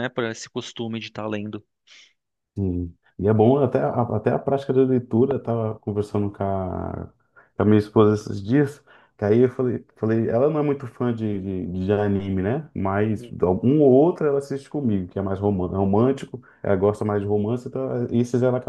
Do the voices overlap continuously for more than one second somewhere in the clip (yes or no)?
no